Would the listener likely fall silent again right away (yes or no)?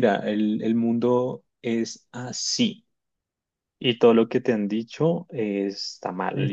yes